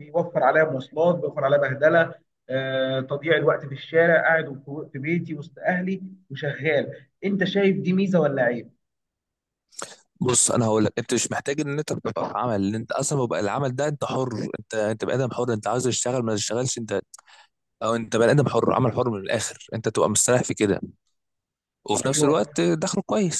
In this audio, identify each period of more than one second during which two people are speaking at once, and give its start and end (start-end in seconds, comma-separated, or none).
none